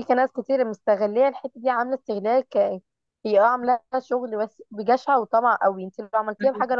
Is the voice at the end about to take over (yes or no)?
no